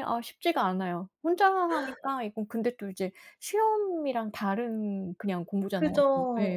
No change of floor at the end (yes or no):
no